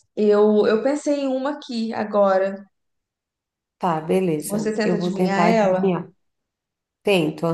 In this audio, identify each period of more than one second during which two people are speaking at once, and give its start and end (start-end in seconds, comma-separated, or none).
4.5-5.9